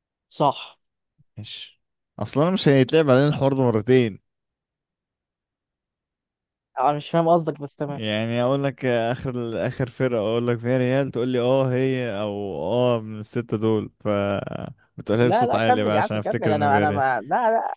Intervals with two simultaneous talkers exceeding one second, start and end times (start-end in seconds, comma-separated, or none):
15.2-17.0